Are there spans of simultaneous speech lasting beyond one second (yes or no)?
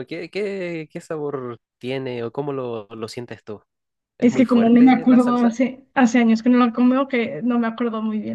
yes